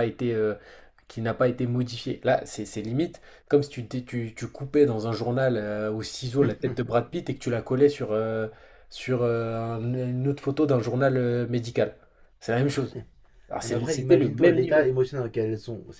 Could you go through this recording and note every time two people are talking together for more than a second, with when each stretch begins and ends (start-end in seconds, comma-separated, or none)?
13.6-14.9